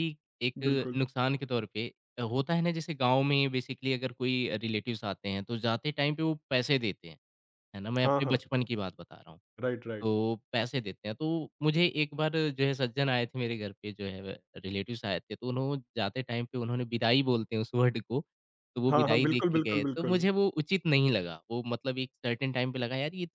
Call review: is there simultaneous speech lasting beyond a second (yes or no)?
yes